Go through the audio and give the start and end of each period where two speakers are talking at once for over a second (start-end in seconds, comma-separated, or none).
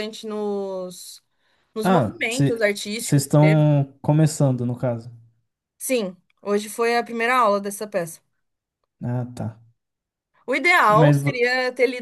1.8-3.7